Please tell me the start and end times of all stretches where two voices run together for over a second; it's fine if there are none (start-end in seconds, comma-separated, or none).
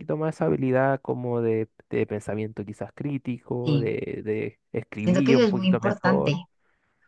5.0-6.4